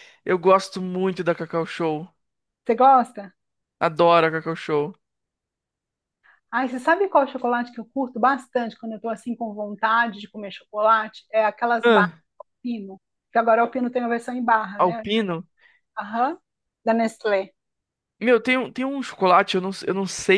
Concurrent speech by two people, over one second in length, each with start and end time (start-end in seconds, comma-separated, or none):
none